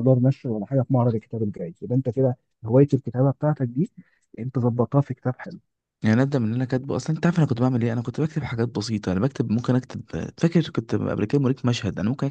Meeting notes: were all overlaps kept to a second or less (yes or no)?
yes